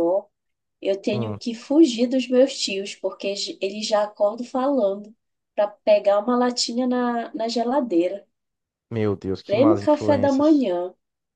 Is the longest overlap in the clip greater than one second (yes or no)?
yes